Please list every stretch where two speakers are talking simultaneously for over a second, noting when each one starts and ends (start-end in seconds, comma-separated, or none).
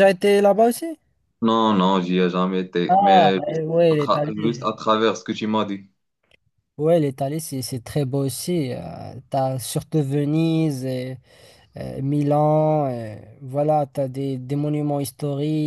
2.9-4.5